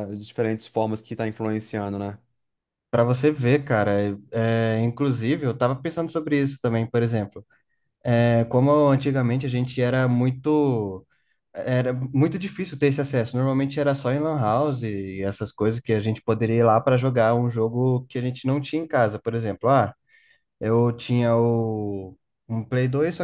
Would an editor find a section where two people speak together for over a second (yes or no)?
no